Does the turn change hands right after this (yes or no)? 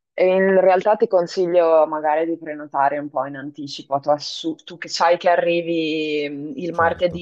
no